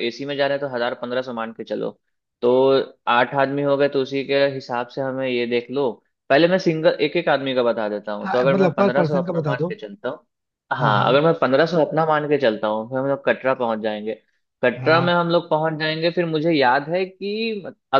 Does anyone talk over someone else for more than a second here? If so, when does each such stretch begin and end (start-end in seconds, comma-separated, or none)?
8.2-9.7